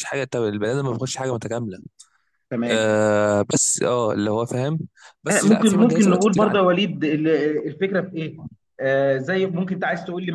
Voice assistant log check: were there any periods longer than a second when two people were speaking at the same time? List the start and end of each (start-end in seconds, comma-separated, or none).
5.3-6.6